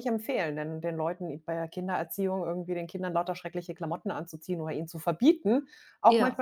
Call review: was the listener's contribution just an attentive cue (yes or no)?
yes